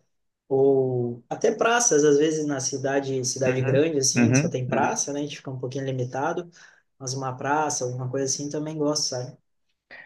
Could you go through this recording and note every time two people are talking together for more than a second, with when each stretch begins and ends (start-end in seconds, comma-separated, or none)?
3.5-5.0